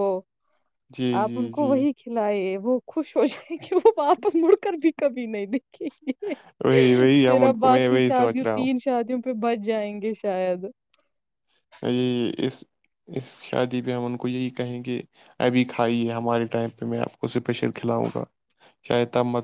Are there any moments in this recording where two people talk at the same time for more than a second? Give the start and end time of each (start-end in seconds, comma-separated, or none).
7.2-8.7